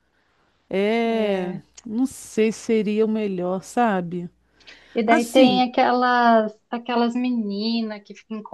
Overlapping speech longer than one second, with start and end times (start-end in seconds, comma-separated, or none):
none